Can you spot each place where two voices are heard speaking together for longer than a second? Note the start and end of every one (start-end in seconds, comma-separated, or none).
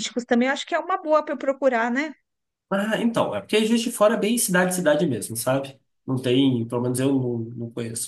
none